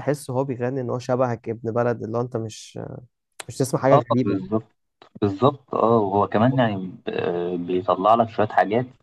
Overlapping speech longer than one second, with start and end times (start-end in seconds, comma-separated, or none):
none